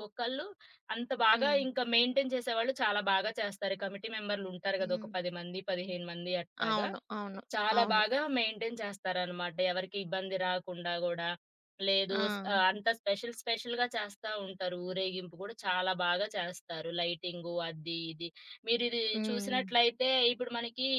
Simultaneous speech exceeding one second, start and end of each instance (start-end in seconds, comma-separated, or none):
none